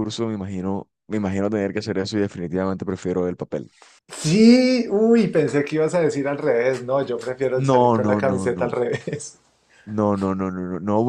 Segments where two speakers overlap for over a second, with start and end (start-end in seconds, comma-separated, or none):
7.5-8.7